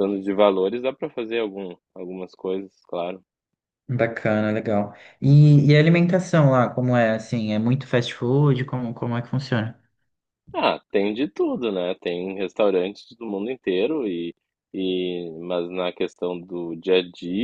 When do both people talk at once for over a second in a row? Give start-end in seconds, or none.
none